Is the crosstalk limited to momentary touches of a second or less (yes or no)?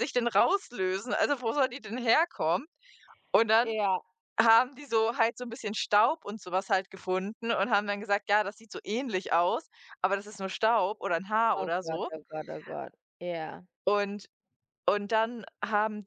yes